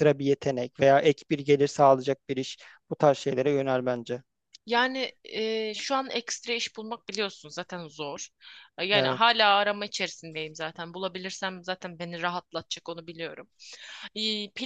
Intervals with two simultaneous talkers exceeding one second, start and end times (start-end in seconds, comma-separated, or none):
none